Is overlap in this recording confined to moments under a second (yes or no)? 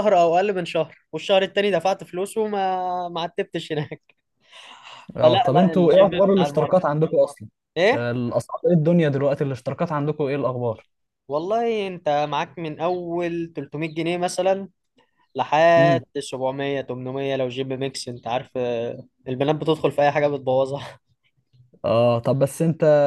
no